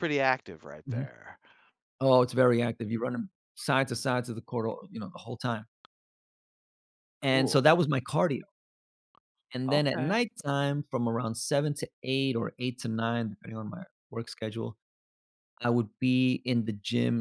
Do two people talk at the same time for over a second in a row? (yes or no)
no